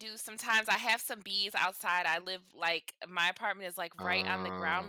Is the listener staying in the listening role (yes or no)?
yes